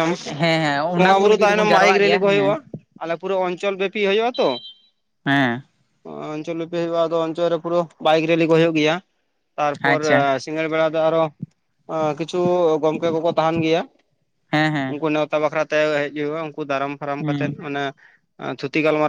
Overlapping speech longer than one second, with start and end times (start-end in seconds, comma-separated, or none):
1.0-2.6